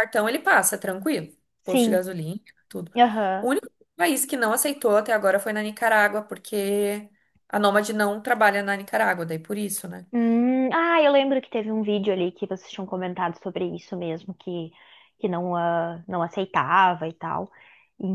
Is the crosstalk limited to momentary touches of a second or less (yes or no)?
yes